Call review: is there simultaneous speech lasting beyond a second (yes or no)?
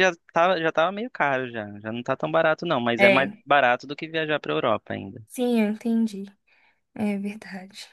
no